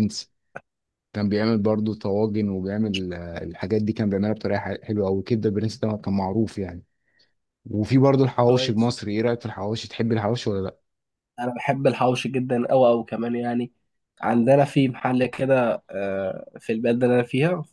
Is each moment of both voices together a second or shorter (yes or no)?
yes